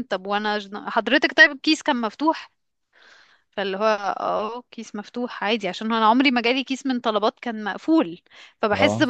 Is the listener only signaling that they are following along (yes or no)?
yes